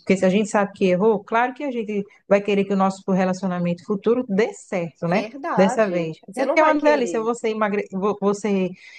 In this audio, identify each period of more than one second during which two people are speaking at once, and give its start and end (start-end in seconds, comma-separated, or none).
5.1-7.3